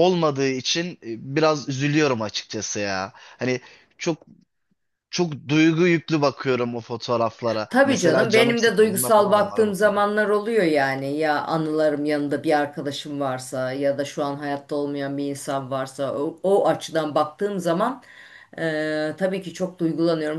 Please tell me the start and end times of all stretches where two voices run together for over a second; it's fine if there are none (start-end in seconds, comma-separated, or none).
7.7-10.0